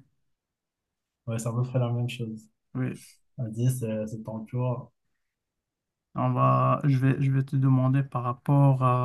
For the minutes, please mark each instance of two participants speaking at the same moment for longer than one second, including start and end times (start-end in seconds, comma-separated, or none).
none